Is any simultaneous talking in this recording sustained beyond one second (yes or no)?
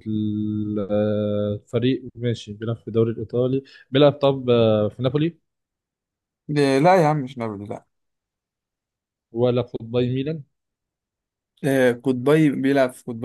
no